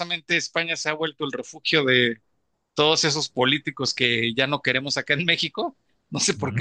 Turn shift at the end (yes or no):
no